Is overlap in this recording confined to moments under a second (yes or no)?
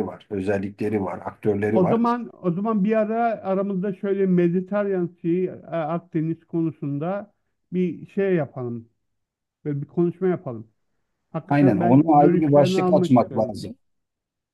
no